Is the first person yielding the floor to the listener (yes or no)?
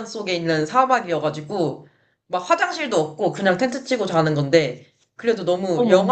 no